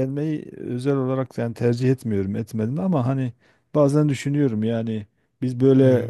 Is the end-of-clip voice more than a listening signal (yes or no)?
no